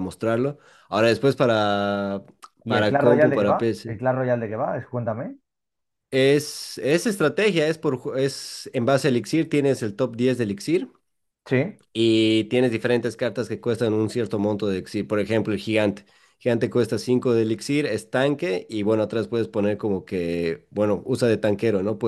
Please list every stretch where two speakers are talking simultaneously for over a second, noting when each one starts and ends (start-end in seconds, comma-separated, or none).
2.7-4.0